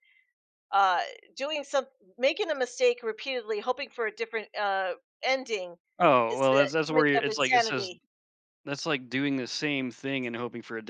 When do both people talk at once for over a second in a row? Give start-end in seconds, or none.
6.3-7.9